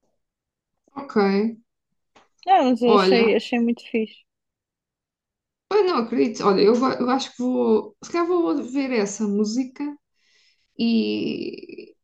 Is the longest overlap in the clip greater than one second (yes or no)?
no